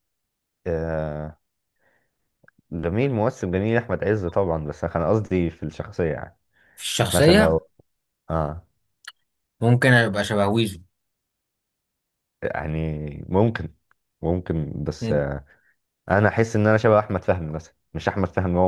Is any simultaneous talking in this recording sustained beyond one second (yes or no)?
no